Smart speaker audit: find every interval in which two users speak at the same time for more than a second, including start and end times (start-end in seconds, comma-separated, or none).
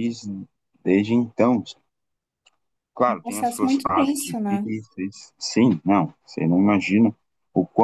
3.1-4.7